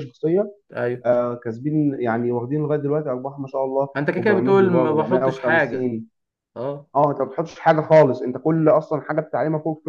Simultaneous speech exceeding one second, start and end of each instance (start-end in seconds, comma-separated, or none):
4.0-5.9